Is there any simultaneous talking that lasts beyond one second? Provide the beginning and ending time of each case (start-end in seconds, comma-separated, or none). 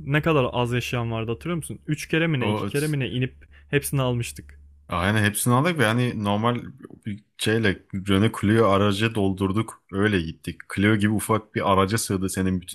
none